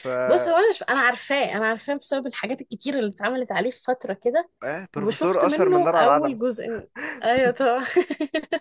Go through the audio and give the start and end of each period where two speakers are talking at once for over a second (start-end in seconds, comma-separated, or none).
5.0-6.4